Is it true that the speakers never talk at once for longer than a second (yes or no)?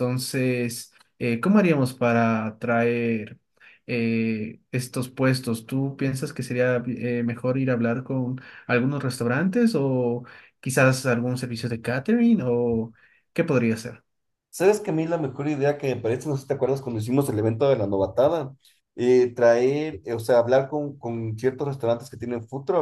yes